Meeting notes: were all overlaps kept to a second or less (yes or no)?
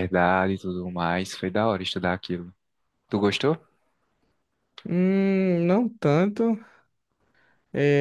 yes